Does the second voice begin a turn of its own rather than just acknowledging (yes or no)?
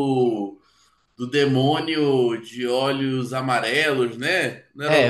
yes